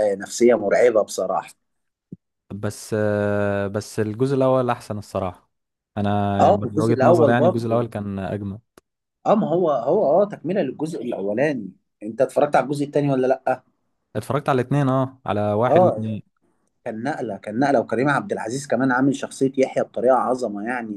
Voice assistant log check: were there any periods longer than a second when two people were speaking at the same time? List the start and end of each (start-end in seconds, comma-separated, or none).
6.4-7.9